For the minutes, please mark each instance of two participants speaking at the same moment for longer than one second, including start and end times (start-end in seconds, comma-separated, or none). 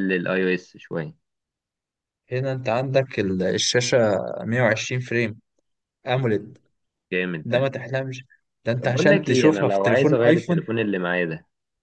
8.8-10.6